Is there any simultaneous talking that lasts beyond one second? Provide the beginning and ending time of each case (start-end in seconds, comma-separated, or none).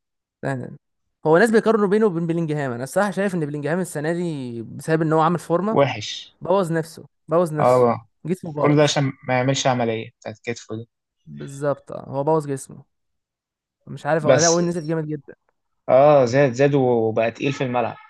none